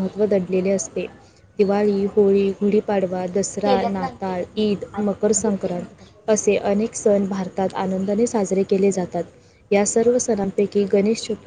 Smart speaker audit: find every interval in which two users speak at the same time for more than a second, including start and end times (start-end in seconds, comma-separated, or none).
3.6-6.3